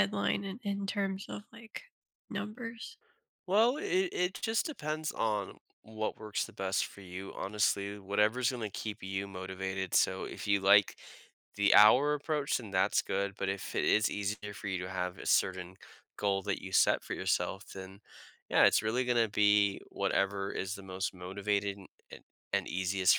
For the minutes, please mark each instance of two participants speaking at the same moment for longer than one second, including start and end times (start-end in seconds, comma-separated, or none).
none